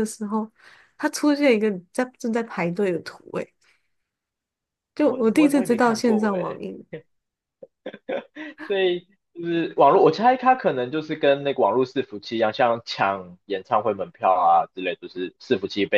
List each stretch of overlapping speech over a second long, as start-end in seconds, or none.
5.0-6.6